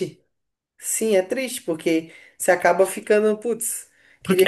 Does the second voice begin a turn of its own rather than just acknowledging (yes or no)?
yes